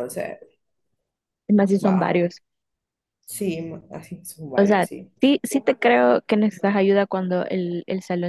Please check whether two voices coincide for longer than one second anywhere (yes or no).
no